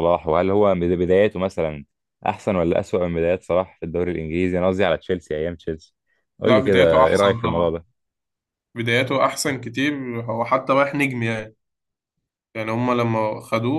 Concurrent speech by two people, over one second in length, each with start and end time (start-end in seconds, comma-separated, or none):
6.5-7.7